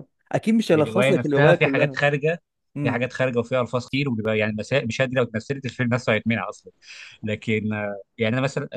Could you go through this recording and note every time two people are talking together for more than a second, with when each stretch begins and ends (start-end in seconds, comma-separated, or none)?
0.7-2.0